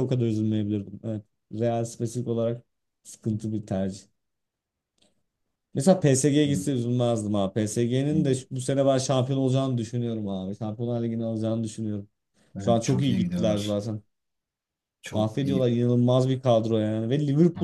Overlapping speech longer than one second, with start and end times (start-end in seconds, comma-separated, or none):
12.6-13.8